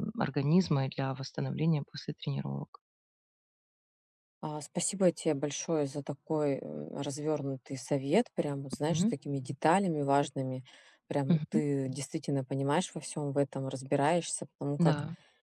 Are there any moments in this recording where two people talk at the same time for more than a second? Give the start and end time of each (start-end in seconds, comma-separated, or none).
none